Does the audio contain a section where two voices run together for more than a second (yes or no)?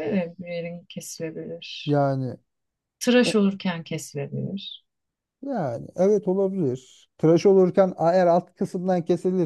no